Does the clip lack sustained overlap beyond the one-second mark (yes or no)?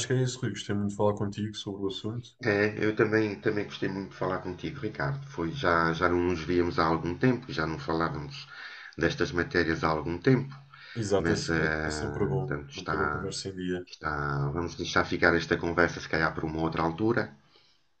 no